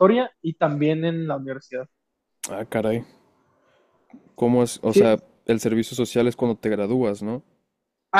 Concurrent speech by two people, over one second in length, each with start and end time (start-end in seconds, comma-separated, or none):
none